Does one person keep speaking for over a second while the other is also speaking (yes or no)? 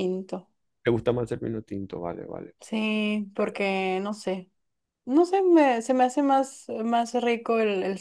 no